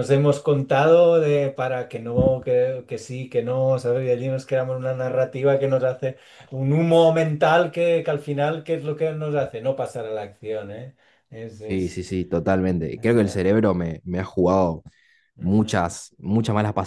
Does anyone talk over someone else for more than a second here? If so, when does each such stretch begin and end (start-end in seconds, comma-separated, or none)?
none